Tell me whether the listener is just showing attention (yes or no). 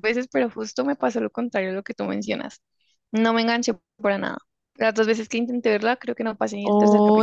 no